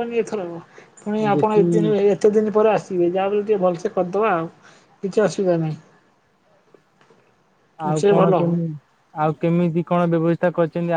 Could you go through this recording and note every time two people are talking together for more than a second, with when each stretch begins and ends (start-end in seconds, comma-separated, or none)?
none